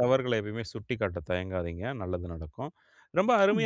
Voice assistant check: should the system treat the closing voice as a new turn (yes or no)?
no